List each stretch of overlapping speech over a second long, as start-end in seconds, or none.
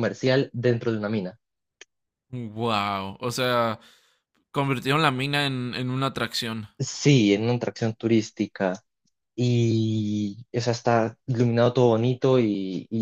none